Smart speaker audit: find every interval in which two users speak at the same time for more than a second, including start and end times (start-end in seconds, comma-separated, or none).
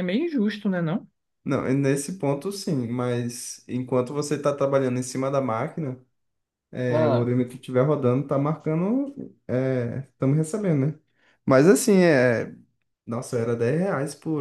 none